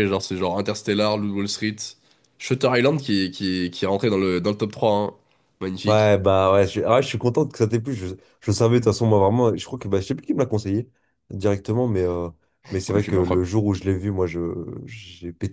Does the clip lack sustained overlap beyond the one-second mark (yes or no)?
yes